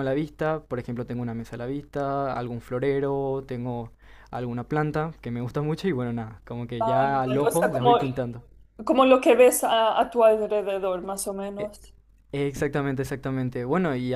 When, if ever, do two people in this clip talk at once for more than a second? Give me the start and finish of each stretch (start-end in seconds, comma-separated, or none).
6.8-8.0